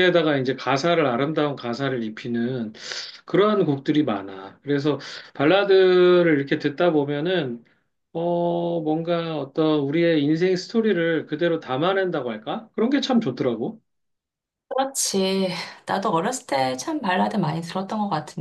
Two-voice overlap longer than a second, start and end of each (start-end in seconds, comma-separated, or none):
none